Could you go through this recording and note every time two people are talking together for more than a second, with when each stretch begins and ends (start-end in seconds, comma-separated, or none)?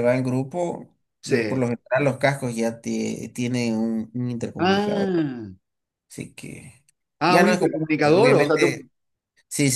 7.3-8.9